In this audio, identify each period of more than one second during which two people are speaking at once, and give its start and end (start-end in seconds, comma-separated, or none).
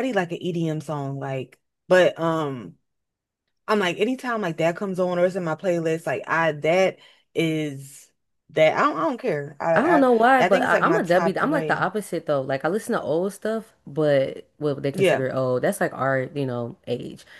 9.7-11.9